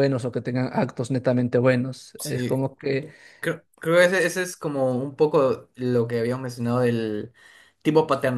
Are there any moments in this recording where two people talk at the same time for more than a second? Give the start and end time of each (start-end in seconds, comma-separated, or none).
none